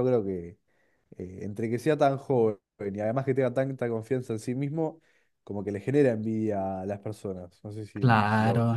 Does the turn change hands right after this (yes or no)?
yes